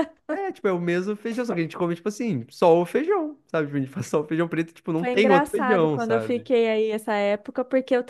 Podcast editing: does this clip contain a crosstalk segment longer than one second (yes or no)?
yes